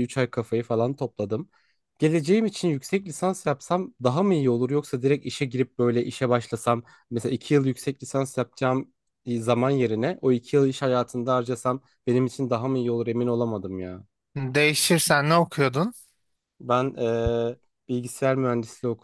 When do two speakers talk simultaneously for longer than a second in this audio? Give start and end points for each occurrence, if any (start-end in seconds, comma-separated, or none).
none